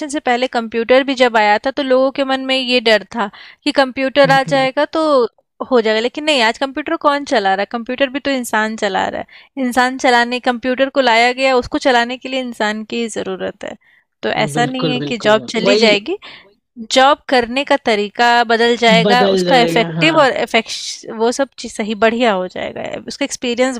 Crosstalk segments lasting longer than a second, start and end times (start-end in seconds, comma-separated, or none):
14.4-15.9, 19.0-20.3